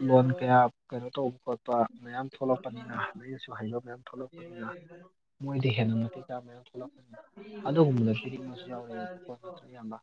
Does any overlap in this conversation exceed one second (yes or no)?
yes